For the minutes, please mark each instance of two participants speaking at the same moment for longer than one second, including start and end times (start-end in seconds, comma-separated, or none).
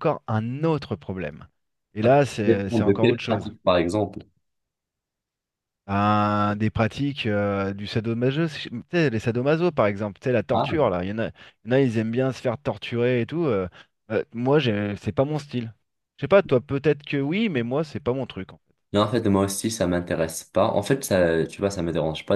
2.0-3.5